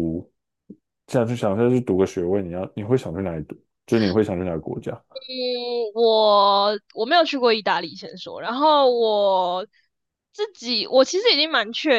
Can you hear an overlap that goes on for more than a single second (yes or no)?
no